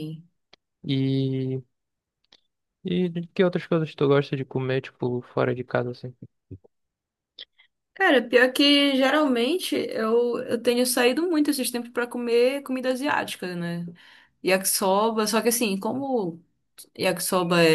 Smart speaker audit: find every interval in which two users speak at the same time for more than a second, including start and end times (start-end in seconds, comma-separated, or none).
none